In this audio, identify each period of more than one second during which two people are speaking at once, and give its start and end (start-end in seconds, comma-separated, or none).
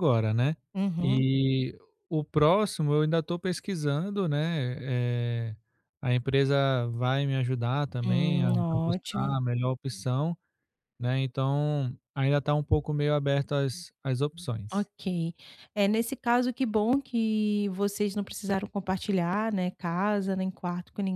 8.0-9.3